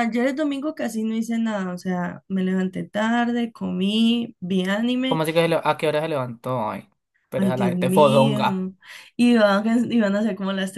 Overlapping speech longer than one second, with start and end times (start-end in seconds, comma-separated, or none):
7.4-8.7